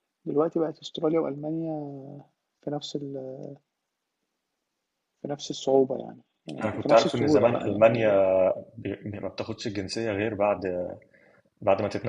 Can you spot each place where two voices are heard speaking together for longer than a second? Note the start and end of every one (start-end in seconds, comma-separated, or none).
6.6-8.1